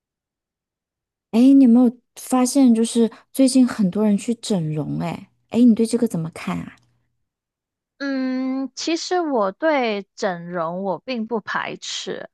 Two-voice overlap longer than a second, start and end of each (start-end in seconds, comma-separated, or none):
none